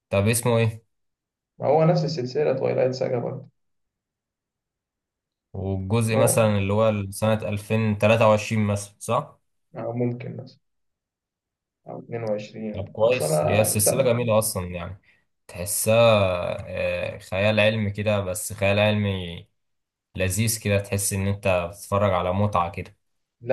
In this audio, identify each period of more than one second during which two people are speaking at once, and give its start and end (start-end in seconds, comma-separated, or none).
12.7-14.2